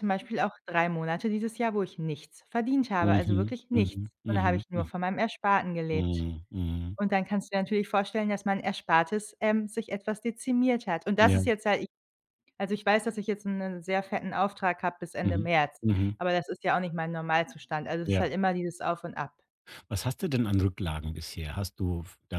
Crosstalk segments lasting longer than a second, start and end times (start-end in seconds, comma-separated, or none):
3.0-4.9